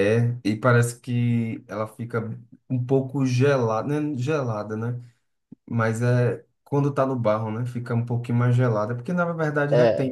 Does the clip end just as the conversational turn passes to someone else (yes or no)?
yes